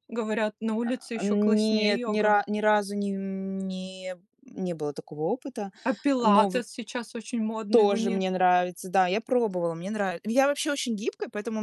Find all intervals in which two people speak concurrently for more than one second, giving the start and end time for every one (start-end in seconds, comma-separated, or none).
0.8-2.4